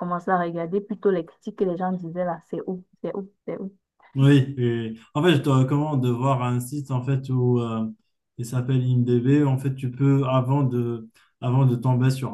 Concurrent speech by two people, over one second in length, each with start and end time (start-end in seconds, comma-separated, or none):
none